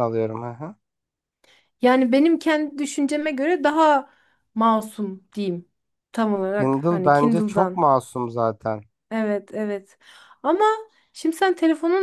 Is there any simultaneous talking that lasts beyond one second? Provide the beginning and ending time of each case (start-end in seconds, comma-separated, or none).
6.5-7.9